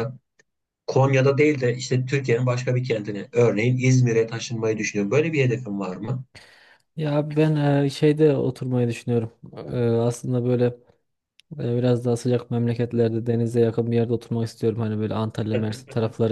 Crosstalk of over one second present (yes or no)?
no